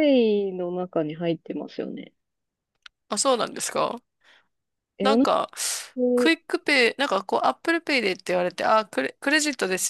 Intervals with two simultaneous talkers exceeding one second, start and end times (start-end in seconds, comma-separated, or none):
none